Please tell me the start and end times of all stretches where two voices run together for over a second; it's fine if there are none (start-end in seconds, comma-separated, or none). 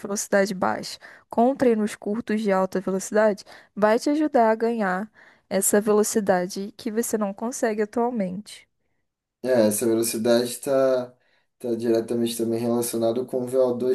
none